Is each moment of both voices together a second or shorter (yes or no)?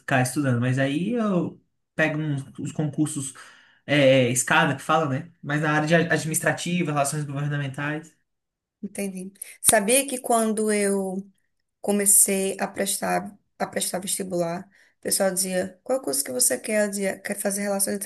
yes